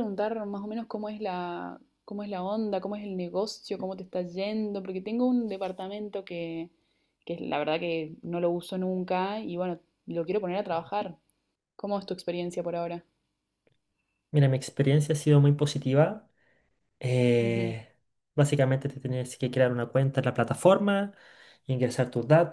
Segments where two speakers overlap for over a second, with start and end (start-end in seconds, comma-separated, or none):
none